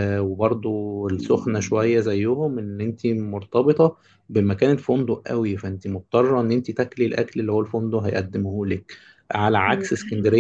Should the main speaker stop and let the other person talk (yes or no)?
no